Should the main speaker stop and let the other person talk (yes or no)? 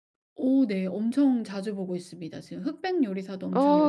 yes